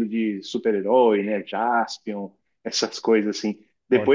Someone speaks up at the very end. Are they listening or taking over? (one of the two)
listening